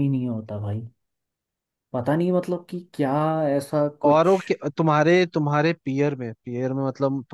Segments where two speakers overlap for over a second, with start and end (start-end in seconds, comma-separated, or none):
none